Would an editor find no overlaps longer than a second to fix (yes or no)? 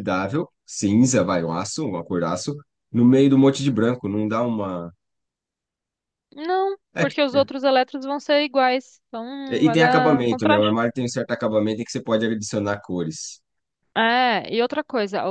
no